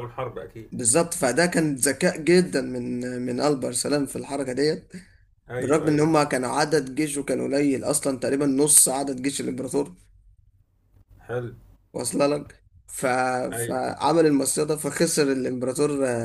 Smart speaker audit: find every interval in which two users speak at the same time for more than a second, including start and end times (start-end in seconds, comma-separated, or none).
none